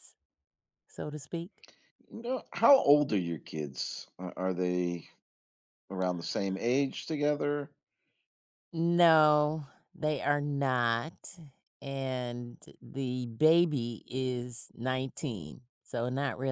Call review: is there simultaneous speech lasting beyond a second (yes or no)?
no